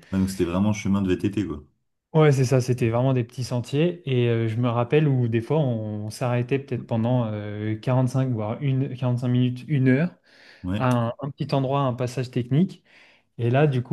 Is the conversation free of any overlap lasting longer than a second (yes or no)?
yes